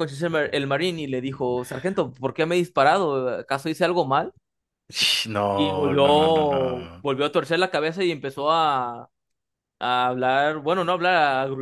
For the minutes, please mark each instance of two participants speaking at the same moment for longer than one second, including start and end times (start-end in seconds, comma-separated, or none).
5.5-7.0